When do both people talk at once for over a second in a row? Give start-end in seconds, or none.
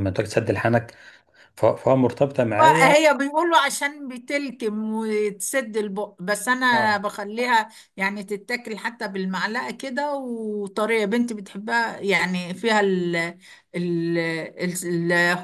none